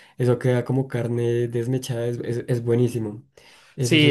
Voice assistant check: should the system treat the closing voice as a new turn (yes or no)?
yes